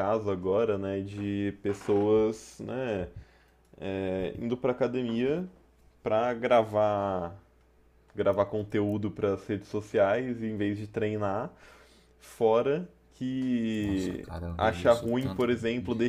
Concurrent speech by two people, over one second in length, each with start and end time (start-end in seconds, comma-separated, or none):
13.8-15.5